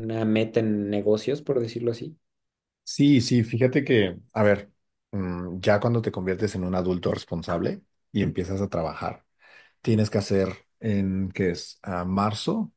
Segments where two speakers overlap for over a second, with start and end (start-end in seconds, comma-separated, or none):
none